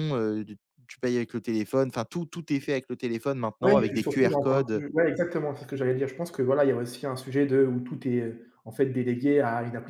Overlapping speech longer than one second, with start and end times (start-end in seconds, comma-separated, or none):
3.6-4.8